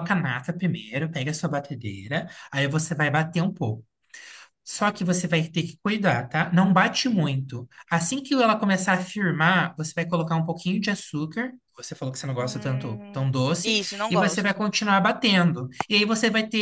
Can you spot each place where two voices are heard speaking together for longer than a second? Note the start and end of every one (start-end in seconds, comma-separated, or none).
12.4-14.5